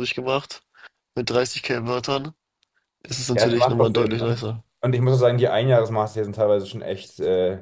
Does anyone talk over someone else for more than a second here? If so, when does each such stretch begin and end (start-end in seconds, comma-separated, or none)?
3.3-4.6